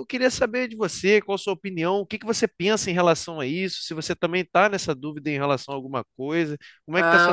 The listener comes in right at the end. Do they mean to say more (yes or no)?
yes